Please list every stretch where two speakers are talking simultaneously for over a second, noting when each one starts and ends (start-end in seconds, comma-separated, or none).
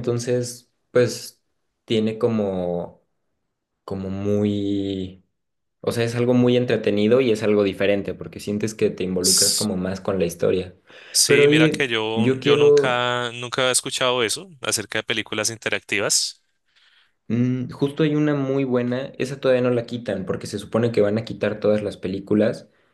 11.2-13.0